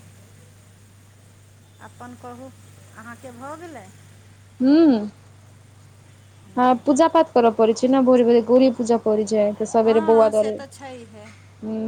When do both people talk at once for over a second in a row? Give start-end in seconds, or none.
9.8-11.2